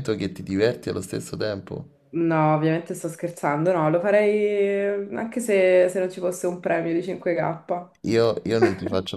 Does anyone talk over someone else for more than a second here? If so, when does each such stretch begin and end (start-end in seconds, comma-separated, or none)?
none